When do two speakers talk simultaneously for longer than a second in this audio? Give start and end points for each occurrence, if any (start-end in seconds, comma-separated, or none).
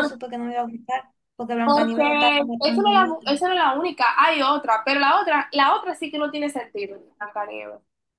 1.6-3.3